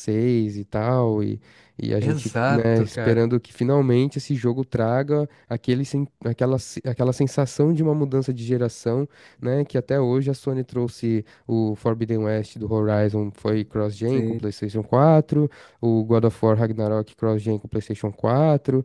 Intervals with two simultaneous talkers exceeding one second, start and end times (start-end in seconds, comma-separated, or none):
2.0-3.3